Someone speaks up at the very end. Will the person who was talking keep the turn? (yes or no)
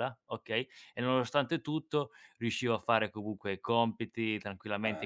yes